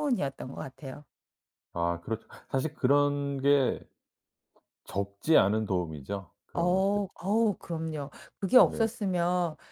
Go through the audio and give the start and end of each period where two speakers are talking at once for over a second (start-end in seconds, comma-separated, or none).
none